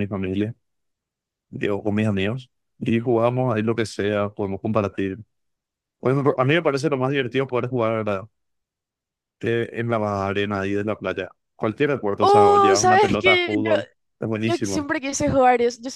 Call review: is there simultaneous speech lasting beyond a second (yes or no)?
yes